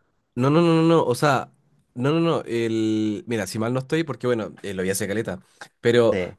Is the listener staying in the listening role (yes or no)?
yes